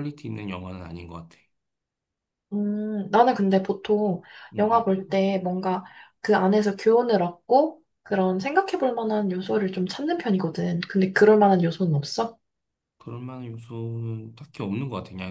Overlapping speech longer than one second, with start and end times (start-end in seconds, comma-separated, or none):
none